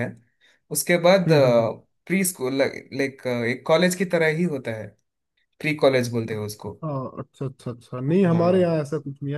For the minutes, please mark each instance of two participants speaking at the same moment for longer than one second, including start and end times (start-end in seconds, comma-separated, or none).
none